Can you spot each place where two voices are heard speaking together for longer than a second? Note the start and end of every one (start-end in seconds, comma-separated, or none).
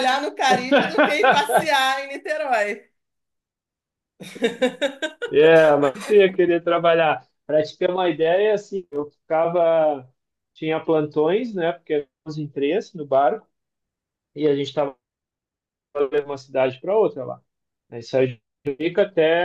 none